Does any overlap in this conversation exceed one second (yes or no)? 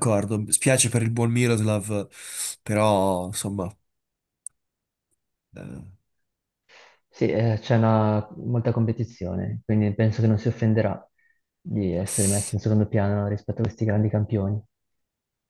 no